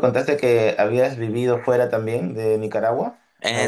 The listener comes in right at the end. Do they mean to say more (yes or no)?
yes